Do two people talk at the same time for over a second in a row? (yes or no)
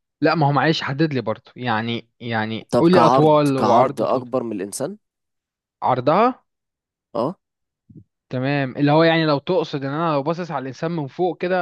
yes